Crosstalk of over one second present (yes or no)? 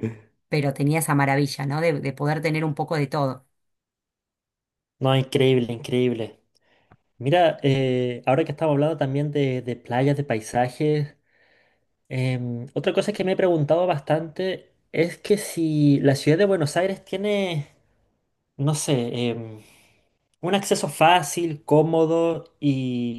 no